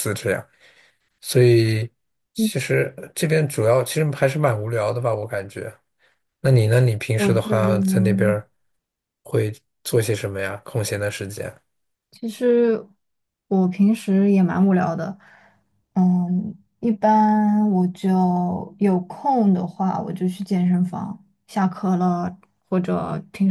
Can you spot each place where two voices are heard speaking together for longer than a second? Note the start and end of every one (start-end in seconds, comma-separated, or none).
7.2-8.4